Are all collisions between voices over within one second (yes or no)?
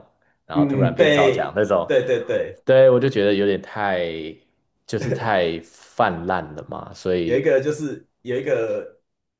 no